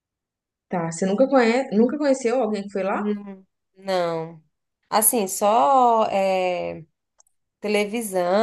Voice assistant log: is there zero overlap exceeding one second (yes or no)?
yes